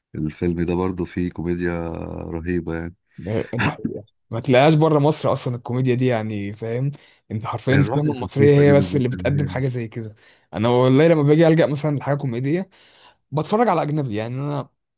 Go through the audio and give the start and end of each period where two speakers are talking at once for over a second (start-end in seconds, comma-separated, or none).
7.7-9.5